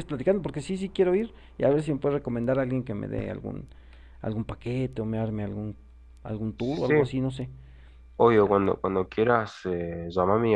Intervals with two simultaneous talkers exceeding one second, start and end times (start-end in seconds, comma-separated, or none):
none